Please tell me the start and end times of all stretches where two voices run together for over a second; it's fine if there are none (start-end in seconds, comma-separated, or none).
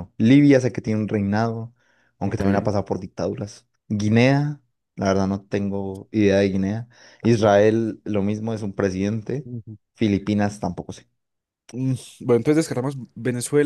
none